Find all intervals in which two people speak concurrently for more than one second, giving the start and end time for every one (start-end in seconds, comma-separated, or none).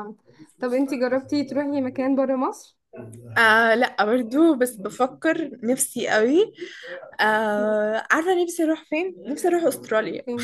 none